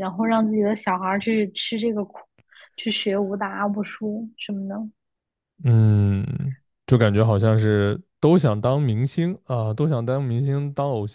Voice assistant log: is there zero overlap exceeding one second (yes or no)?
yes